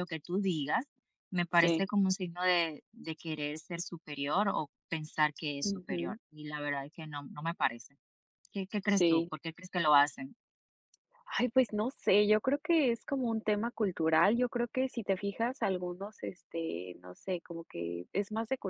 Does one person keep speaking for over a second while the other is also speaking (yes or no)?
no